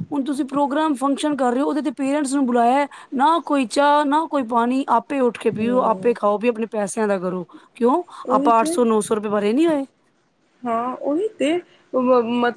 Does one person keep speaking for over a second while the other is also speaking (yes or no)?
no